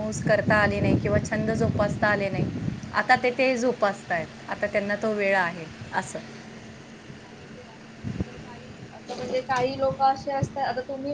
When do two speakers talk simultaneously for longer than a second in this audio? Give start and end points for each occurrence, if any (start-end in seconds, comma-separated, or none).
none